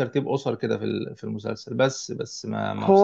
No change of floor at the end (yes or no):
no